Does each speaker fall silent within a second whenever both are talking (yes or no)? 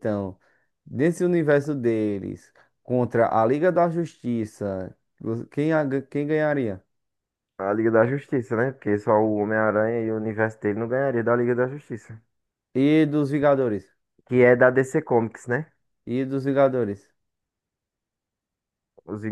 yes